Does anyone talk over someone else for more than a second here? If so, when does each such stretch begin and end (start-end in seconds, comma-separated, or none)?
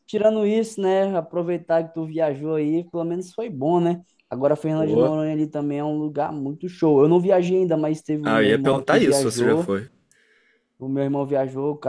8.2-9.7